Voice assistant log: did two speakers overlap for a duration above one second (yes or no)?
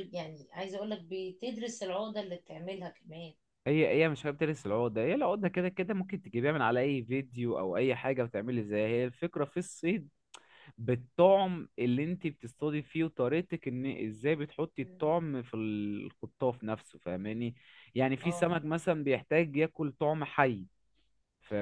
no